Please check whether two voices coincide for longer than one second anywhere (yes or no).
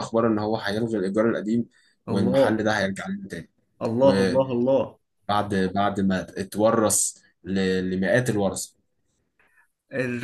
no